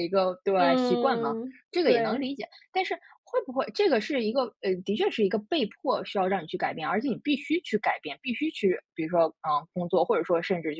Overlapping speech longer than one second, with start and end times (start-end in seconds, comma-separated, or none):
0.6-2.2